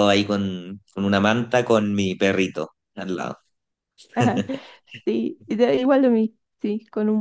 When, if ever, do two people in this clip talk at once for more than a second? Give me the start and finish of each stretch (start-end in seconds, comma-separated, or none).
none